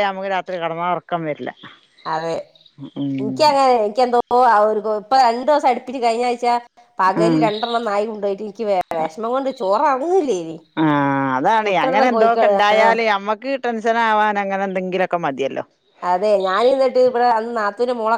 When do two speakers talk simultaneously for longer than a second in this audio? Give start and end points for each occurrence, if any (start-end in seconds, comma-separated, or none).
none